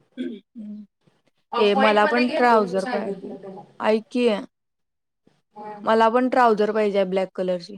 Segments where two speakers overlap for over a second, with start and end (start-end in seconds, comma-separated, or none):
1.6-3.4